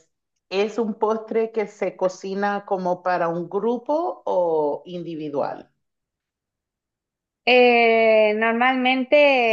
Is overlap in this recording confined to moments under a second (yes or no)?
yes